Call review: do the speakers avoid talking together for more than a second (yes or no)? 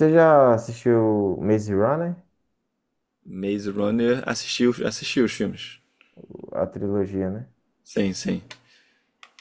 yes